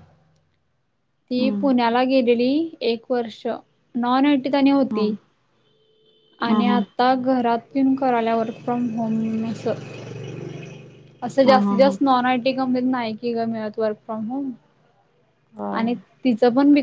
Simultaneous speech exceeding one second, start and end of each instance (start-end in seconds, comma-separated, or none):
none